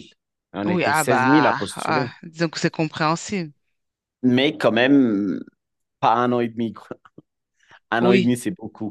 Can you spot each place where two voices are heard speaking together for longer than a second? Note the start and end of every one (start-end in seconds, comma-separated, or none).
0.7-2.1